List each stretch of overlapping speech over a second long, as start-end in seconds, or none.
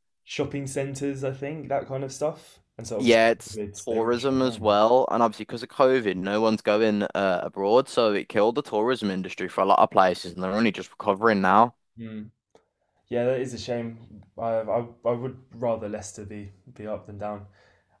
3.0-4.8